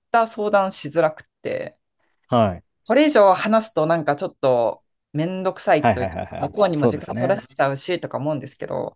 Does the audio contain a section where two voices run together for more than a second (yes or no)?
yes